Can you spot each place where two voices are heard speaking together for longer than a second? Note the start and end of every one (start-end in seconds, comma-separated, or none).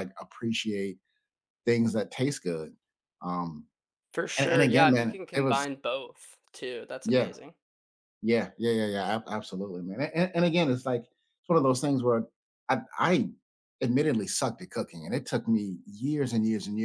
4.4-5.7